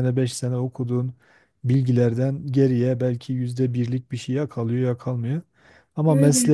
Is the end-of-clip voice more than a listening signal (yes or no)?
no